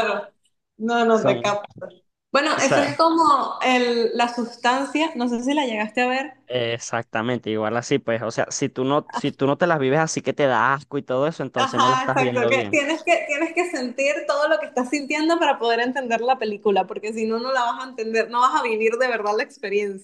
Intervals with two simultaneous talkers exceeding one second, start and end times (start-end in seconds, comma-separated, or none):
11.6-12.8